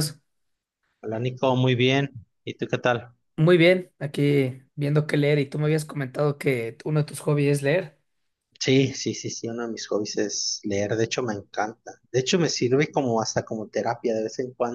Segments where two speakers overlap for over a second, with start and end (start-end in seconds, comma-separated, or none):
none